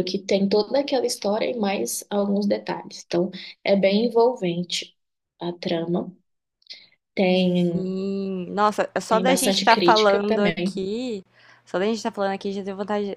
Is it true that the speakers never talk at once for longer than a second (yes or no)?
no